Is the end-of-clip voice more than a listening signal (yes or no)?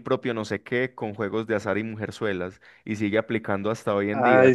no